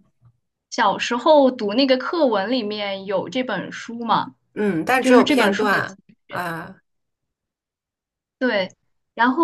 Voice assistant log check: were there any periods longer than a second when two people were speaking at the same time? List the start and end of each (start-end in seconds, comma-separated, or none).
5.0-6.4